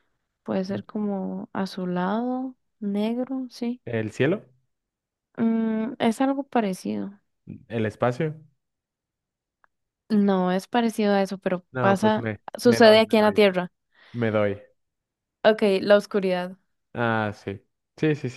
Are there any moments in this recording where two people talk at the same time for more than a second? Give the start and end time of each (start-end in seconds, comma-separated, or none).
11.7-13.4